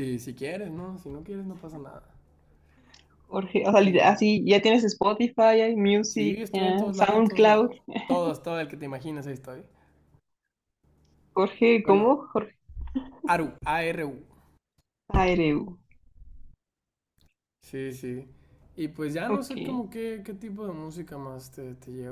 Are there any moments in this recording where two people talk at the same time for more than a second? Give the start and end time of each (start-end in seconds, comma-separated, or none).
6.1-7.7